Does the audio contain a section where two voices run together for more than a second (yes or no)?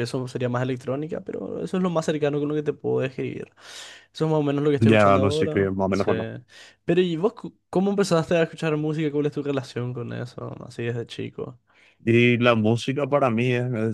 yes